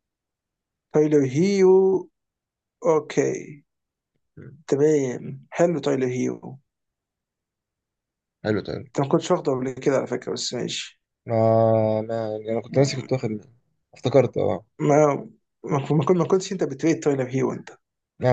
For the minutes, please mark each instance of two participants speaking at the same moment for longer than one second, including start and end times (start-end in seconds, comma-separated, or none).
none